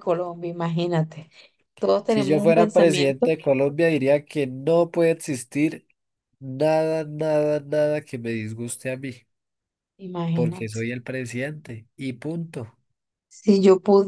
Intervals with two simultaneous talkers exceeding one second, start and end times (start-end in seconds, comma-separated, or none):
2.1-3.3